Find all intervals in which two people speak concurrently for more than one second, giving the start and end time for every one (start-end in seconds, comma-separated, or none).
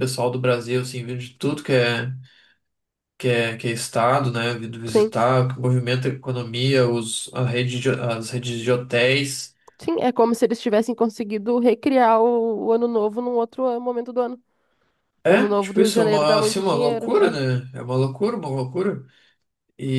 15.2-17.4